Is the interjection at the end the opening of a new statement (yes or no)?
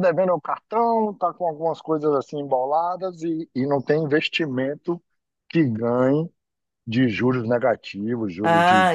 yes